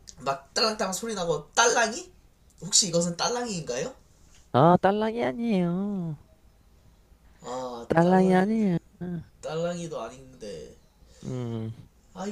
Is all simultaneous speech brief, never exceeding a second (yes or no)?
yes